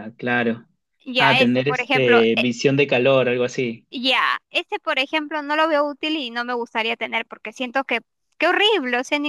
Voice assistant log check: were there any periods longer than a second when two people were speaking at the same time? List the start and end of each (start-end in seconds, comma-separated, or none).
1.2-2.5